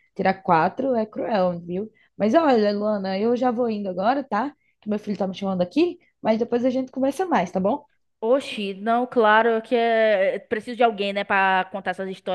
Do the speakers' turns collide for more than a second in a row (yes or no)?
no